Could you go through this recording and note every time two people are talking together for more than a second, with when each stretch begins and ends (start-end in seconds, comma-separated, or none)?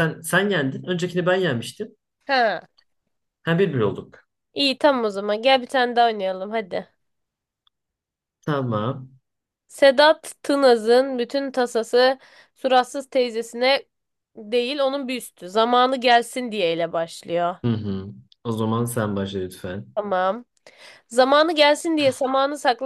none